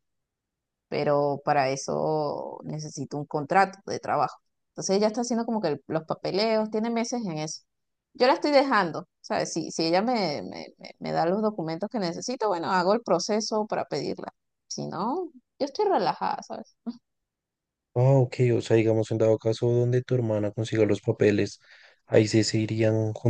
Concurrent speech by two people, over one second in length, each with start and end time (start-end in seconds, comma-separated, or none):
none